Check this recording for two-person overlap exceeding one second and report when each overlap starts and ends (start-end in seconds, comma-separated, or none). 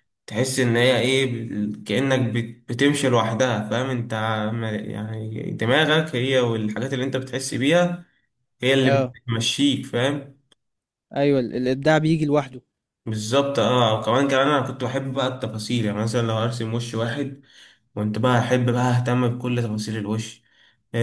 none